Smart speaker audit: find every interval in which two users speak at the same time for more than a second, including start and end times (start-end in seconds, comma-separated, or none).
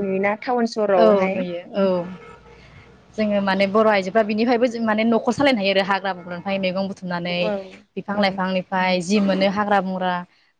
none